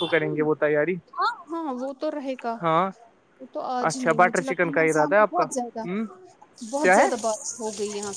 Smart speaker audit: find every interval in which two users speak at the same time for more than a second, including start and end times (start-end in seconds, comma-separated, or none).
3.9-5.4